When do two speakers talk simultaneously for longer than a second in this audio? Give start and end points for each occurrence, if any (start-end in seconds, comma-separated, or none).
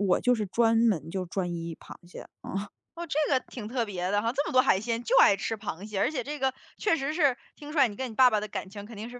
none